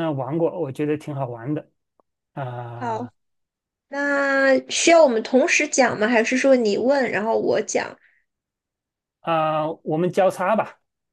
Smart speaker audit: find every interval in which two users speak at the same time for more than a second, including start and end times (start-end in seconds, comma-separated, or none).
none